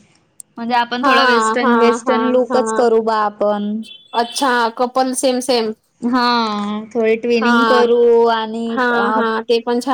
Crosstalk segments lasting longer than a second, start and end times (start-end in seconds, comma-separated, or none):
1.0-2.9